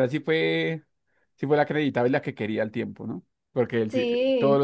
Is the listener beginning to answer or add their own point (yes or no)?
no